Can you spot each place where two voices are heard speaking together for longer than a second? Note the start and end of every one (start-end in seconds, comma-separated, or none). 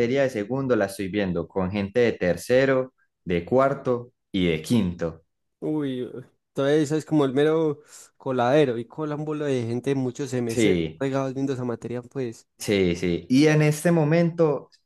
none